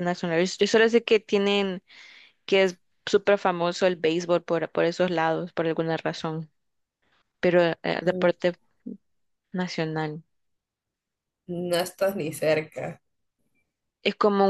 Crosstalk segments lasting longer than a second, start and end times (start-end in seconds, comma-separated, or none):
none